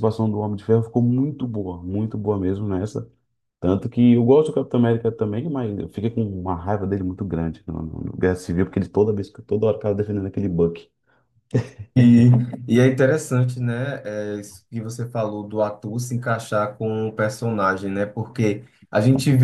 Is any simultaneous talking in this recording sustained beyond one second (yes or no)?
no